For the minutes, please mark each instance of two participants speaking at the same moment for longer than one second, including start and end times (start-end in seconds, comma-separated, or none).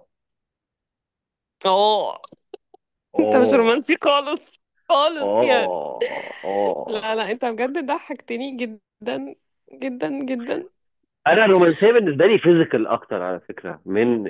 none